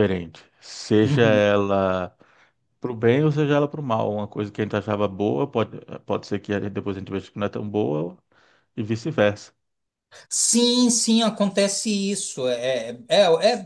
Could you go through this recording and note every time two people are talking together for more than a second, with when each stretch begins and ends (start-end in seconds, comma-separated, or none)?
none